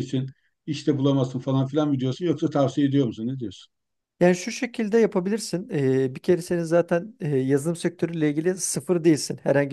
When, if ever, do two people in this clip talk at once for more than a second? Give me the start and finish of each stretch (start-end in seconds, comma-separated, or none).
none